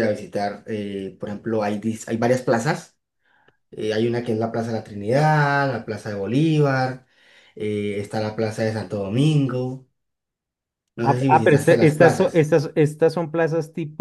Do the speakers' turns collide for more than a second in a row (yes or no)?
yes